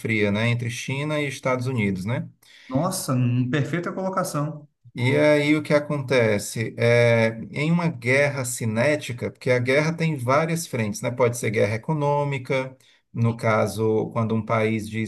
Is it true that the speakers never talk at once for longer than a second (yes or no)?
yes